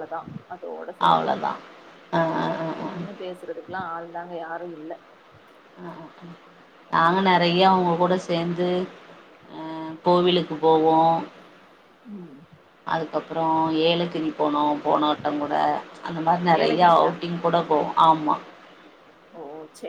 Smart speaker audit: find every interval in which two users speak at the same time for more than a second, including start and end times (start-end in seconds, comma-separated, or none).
none